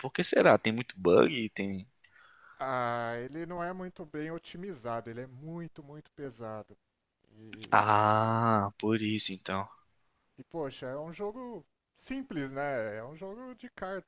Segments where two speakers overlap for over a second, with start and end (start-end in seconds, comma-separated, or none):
none